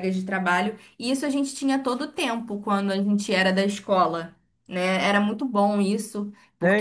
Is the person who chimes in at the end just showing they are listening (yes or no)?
no